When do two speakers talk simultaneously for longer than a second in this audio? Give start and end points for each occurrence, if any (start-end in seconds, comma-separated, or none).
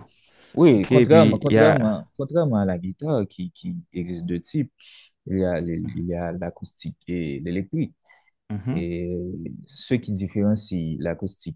0.8-2.0